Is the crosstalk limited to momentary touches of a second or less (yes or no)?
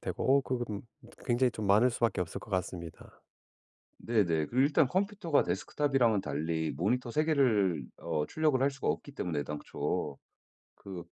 yes